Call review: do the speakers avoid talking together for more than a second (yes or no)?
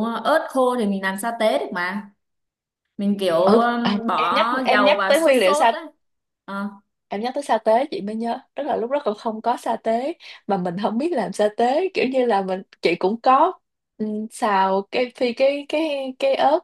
no